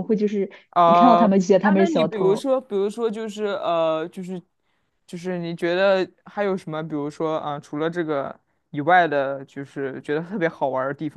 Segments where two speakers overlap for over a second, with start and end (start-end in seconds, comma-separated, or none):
0.7-2.5